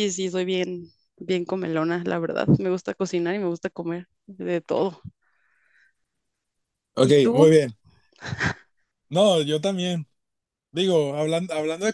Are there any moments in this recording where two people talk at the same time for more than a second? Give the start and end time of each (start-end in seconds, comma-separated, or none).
none